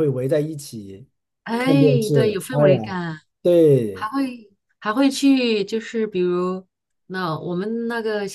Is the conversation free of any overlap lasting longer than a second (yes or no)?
no